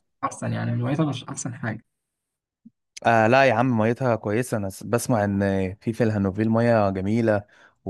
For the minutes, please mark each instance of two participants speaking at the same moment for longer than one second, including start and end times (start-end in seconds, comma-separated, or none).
none